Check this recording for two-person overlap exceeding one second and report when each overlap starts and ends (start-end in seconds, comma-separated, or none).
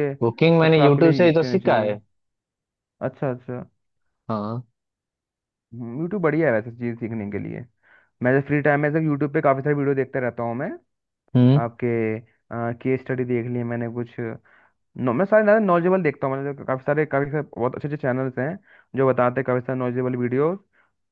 0.6-1.9